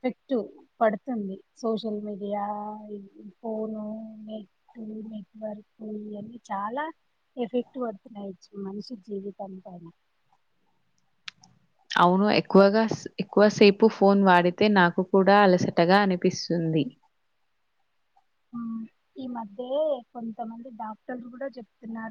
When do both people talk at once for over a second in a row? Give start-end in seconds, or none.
none